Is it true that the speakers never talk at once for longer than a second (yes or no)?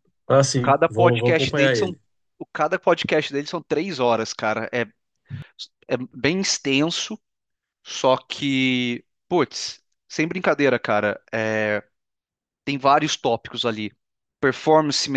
no